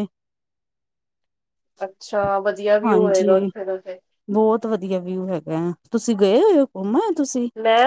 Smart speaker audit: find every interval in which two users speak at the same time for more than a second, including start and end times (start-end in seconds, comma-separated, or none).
none